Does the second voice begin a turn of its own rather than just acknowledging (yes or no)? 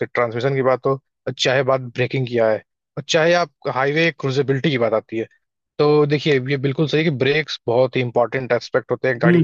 yes